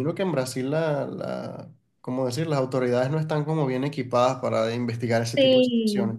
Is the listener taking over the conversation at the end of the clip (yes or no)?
yes